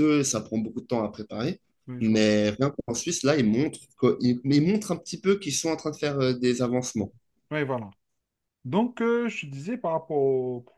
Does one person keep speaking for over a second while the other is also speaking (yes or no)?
no